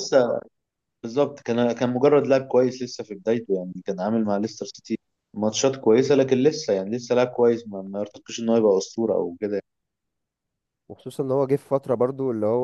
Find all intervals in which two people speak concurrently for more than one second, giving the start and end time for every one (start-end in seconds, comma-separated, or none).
none